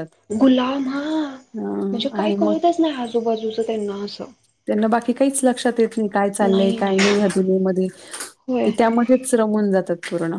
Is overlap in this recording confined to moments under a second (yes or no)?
yes